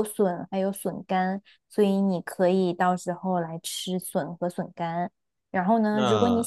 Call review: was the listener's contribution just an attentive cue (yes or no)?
yes